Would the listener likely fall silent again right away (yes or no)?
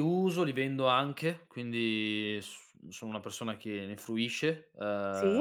yes